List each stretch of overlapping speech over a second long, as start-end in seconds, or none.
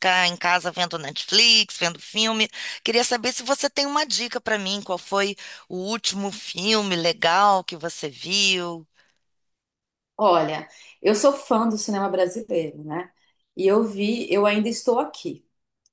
none